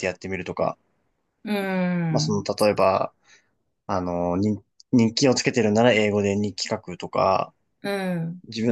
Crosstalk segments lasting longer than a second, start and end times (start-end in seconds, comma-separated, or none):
none